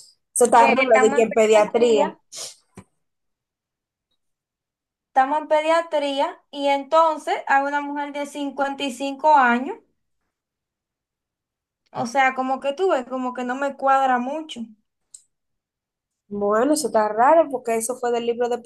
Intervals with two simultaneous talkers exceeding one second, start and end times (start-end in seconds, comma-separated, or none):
0.6-2.0